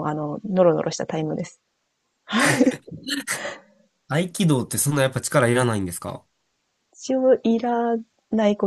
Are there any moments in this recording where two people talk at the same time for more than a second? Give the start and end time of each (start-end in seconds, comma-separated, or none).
none